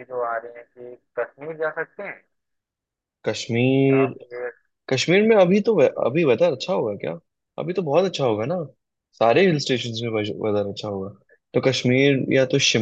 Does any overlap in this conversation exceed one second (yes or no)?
no